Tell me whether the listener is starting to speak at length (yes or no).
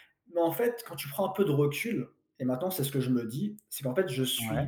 no